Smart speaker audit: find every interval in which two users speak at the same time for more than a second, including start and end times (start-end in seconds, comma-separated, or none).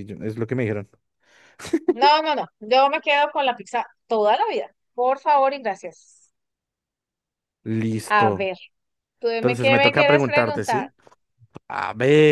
9.3-10.9